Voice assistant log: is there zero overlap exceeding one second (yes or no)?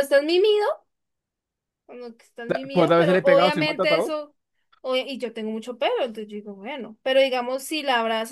no